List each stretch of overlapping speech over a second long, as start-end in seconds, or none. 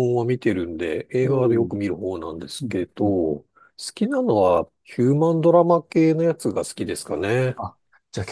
none